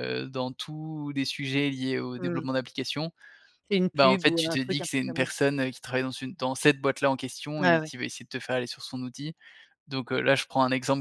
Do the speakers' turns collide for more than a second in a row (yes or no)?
yes